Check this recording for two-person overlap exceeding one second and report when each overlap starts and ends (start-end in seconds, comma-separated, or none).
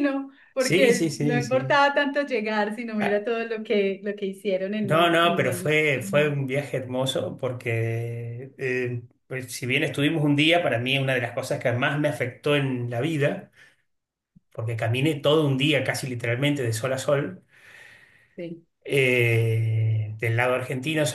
0.6-1.8, 4.8-6.3